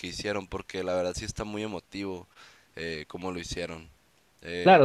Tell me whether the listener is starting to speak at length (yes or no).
yes